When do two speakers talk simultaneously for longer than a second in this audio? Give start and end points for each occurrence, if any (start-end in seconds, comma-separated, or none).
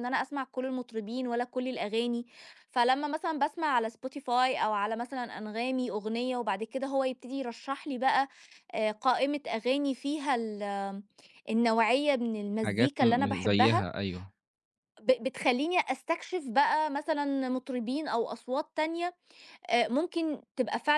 12.6-13.9